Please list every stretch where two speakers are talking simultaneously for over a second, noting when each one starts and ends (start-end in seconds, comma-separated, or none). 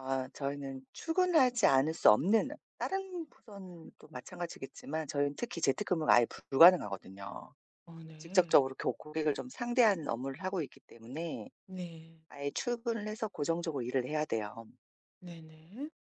none